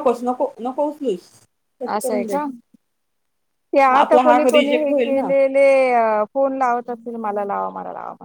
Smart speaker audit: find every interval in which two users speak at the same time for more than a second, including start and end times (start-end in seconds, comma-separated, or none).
3.9-5.3